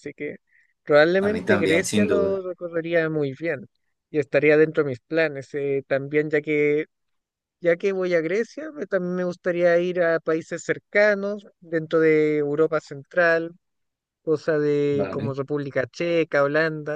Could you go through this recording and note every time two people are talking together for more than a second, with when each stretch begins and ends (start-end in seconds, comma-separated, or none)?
1.2-2.4